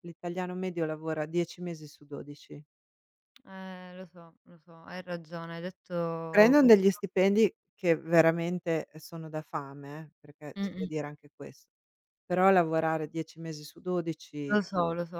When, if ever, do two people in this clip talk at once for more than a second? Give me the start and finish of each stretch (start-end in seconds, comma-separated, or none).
none